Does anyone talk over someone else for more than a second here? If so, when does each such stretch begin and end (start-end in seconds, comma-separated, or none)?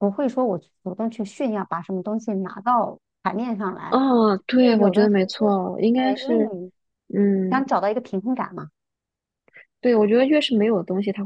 4.6-6.5